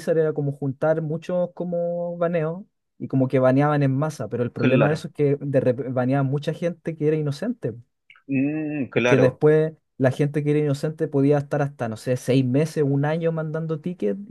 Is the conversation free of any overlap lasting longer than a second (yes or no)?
yes